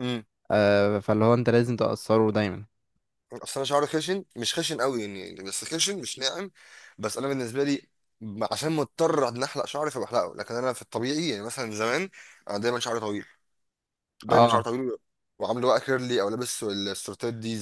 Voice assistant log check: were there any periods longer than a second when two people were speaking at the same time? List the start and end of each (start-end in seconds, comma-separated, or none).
none